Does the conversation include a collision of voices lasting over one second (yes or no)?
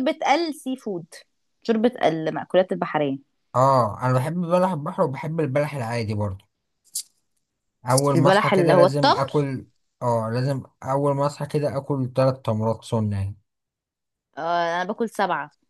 yes